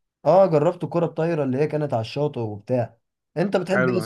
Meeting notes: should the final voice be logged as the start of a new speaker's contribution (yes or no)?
no